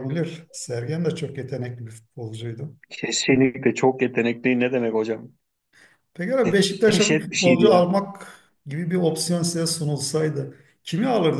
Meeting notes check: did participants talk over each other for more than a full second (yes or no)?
yes